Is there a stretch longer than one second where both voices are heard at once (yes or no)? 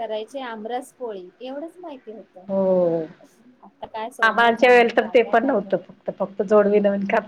yes